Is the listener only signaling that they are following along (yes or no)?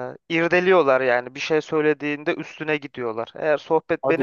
yes